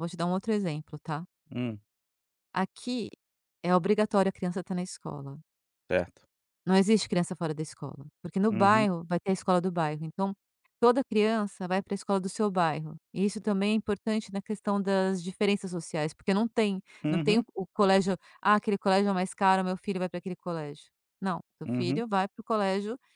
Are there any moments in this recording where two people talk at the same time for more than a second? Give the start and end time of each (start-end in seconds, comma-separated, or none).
none